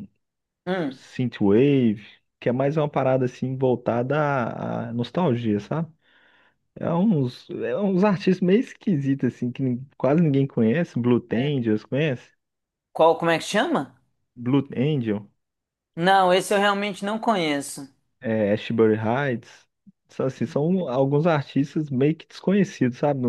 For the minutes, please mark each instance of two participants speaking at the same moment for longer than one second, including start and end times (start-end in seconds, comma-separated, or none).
none